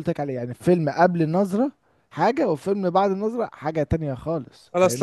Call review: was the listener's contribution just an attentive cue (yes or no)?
no